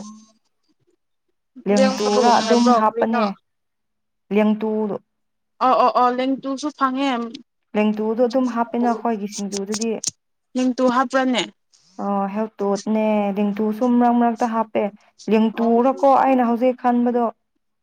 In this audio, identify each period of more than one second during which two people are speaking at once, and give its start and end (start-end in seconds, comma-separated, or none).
1.8-3.2